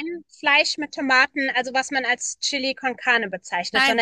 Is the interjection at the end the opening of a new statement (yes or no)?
no